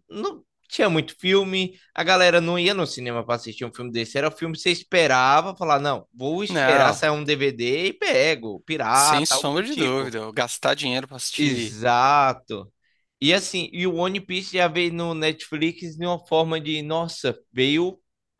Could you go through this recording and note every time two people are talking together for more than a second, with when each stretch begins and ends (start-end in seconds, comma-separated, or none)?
8.9-10.2